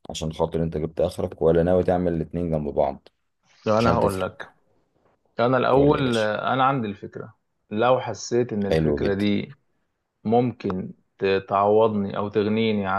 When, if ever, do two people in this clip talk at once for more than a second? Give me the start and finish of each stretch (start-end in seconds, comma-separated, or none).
none